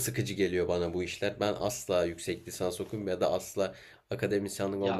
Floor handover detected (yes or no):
yes